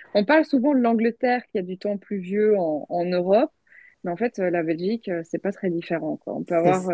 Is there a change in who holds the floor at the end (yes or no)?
no